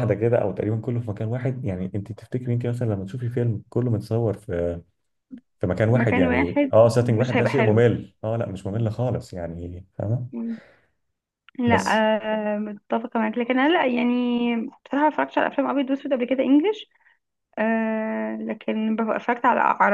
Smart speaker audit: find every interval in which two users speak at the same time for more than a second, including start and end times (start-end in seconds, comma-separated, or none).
5.9-7.8